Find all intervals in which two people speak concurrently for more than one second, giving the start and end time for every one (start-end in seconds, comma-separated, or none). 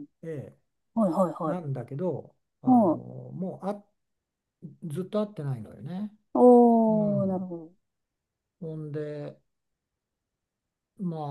none